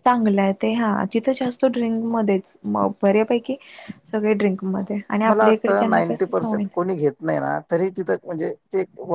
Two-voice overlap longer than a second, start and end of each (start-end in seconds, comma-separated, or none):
5.3-6.6